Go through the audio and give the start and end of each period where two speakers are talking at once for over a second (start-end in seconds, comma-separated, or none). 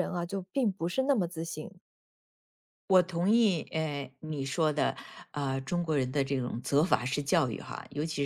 none